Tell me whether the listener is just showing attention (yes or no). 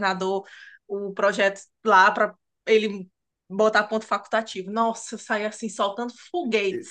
no